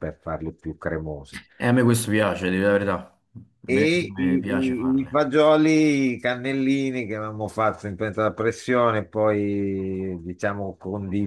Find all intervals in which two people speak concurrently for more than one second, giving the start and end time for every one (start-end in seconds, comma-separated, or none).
3.7-5.2